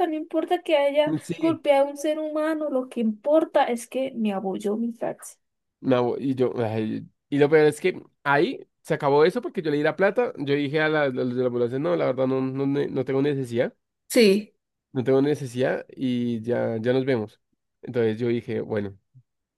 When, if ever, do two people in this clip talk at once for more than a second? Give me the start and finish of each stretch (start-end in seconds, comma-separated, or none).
none